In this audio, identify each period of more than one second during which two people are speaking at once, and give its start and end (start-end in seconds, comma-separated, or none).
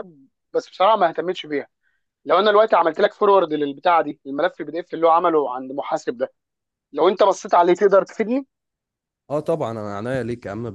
none